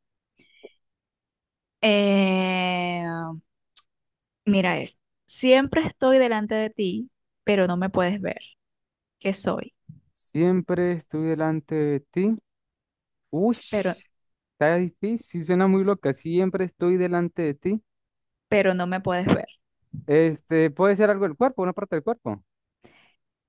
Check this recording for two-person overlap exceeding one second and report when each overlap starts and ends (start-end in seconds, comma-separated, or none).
none